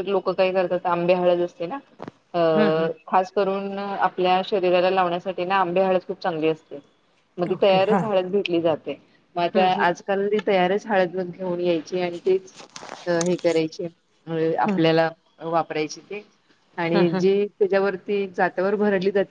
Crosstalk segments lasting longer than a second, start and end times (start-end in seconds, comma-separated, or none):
none